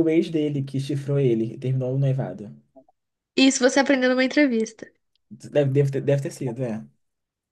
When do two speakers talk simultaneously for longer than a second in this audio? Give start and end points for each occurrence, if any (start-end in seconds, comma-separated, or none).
none